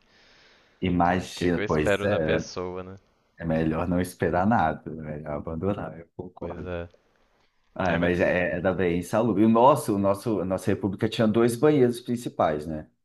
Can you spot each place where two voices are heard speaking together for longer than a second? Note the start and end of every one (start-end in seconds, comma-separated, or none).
1.0-2.5